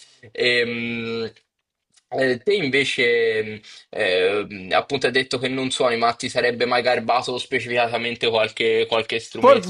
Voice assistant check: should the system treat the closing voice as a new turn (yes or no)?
yes